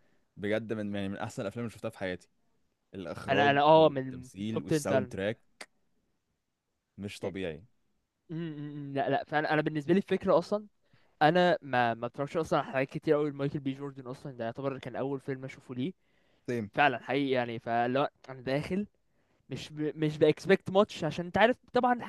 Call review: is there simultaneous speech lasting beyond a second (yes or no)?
yes